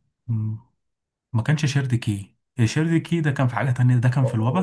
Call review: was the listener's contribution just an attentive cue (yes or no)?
no